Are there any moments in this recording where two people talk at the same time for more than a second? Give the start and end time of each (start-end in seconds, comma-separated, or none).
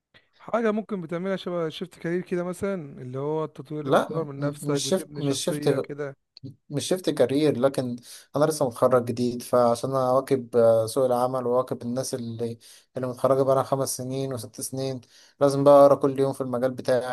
3.8-5.9